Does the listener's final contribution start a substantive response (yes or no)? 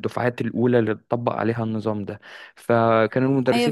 yes